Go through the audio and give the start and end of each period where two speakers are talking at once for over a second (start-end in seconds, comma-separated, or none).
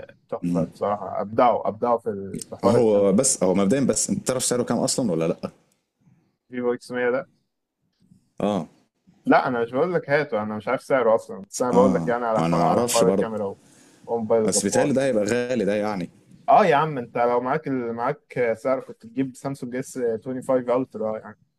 11.7-13.3